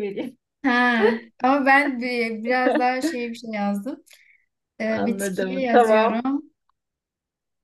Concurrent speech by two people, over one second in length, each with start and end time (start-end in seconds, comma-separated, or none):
4.9-6.2